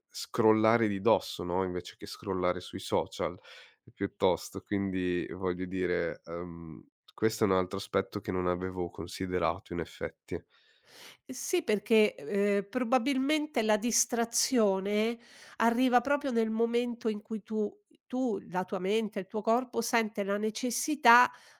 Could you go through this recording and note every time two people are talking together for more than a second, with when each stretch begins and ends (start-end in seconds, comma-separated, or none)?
none